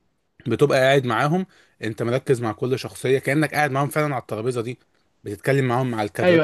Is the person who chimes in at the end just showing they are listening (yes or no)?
yes